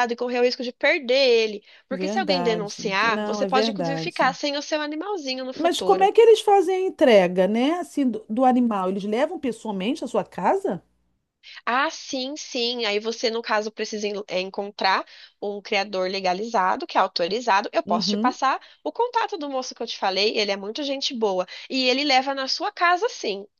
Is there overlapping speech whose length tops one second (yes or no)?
yes